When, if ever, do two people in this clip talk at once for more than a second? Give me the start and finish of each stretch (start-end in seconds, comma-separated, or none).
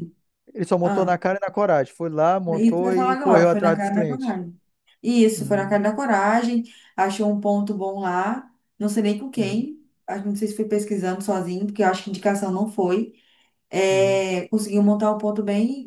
2.5-4.4